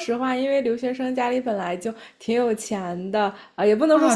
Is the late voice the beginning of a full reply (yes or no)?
no